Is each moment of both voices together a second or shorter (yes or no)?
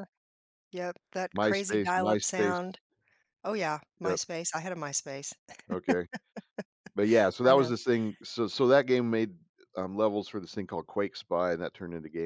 no